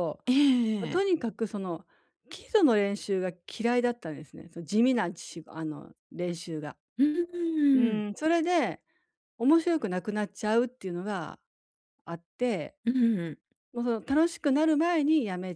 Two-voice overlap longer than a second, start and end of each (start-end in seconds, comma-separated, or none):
none